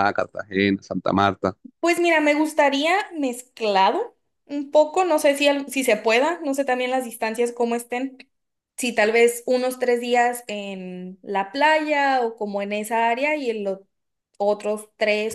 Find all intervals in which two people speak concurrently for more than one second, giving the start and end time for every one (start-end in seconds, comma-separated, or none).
none